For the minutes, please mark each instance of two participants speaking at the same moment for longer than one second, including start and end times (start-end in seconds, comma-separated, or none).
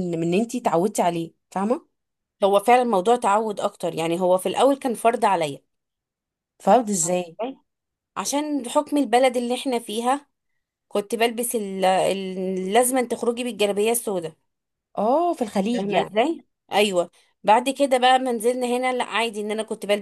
none